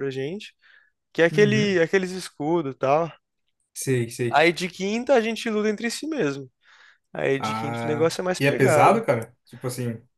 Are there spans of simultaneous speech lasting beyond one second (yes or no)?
yes